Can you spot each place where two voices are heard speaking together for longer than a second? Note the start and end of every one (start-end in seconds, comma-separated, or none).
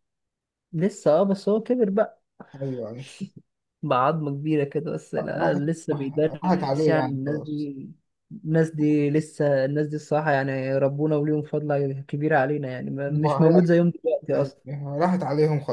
5.4-7.7